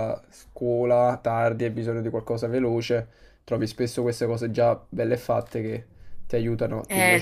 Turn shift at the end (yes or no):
yes